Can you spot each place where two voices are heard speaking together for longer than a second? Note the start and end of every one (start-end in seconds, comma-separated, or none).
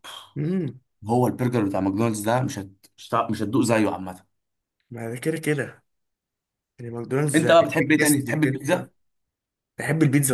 7.3-8.9